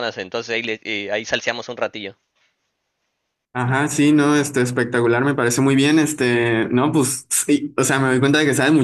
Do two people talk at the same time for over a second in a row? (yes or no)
no